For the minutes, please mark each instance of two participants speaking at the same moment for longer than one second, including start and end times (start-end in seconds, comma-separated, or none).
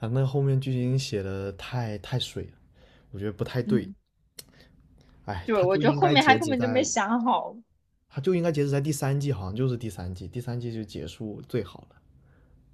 5.4-6.9